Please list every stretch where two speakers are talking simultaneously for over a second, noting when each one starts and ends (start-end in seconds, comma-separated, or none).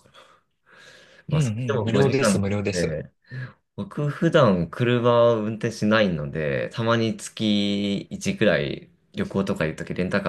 1.3-3.0